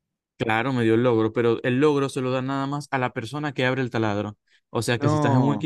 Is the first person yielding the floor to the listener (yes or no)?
no